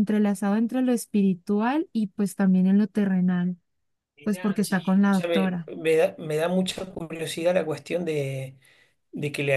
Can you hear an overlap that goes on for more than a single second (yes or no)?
yes